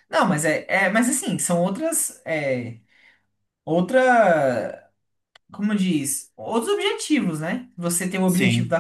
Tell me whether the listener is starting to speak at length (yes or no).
no